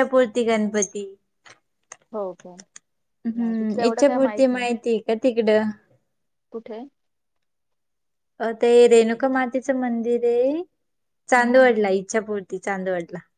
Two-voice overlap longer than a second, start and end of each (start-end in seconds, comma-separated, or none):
3.4-4.7